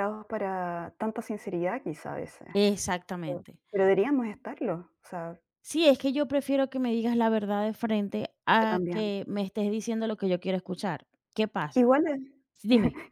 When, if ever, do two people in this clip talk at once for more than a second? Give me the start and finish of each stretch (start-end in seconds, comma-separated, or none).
none